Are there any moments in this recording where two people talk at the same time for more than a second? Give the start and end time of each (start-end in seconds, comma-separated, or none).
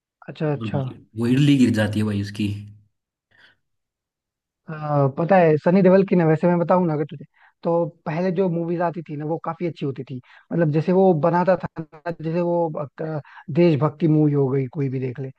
none